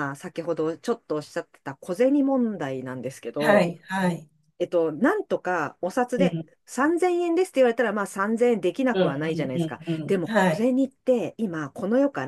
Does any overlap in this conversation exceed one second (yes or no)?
yes